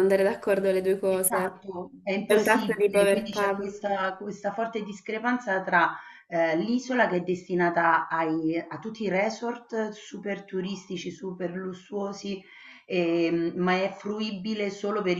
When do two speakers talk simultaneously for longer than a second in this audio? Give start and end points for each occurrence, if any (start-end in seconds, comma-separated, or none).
2.3-3.7